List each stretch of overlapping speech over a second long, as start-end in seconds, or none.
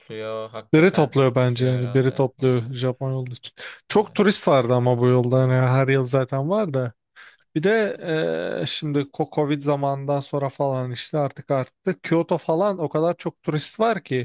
0.7-2.8